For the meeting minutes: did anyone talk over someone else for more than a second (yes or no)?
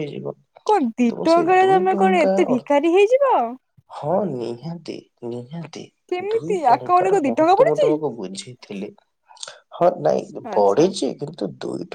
yes